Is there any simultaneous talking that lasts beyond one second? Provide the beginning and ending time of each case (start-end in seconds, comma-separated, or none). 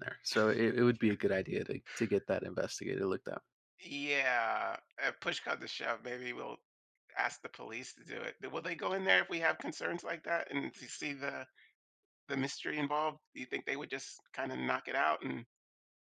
none